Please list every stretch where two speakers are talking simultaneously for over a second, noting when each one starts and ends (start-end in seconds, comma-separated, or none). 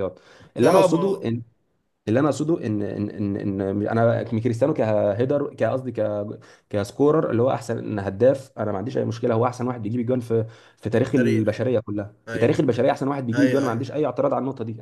none